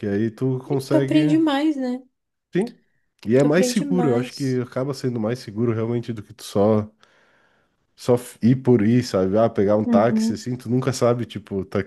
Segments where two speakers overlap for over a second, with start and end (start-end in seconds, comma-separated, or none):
3.4-4.6